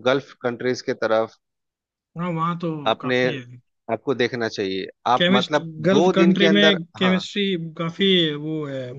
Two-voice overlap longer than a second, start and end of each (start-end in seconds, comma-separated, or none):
5.2-7.2